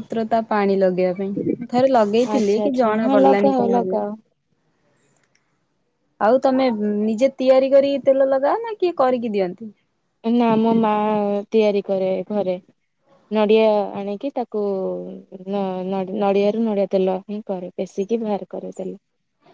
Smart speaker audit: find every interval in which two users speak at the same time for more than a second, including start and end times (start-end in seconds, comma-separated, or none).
2.3-4.0